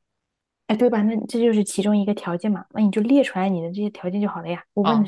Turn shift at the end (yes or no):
yes